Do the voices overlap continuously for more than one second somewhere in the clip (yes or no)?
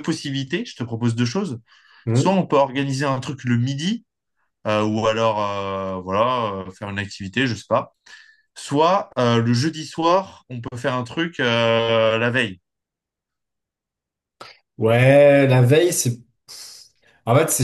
no